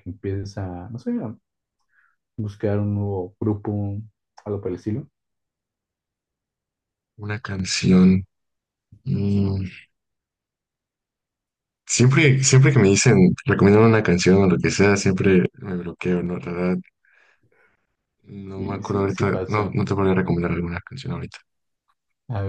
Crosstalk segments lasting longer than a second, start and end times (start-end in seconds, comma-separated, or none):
18.5-19.8